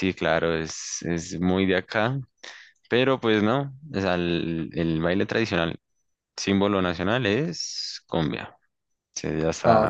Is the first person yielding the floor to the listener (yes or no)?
yes